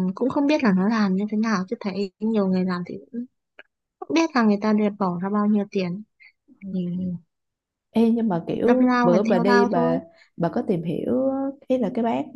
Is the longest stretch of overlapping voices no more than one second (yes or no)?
no